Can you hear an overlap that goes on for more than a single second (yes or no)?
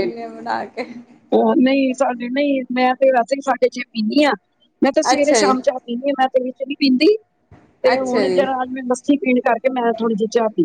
no